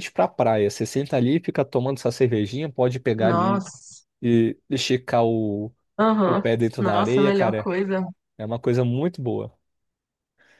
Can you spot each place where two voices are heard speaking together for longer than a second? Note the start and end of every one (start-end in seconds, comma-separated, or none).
6.2-7.7